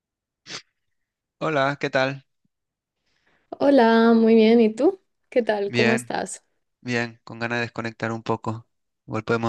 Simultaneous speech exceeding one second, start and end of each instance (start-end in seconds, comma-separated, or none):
none